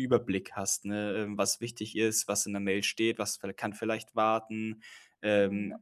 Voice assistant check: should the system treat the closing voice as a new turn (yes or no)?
no